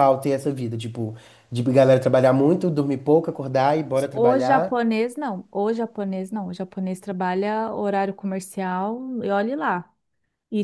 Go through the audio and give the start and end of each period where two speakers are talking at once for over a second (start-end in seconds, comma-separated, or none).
none